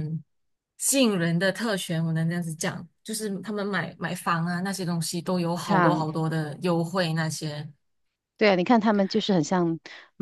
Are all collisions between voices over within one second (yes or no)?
yes